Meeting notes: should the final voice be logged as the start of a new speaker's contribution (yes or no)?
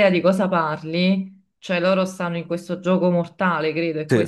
yes